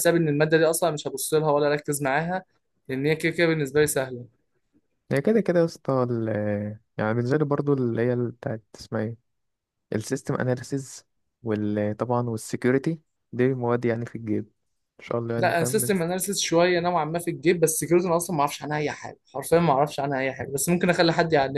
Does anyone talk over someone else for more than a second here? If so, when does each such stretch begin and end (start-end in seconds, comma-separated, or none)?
none